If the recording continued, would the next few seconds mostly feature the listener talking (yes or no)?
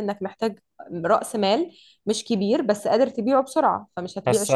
yes